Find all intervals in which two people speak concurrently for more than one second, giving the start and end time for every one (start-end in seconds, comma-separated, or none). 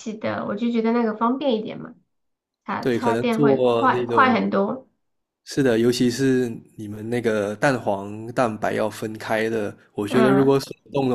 2.8-4.4